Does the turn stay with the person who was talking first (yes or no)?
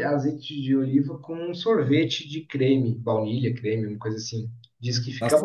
no